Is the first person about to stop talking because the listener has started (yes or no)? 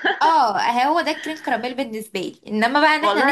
yes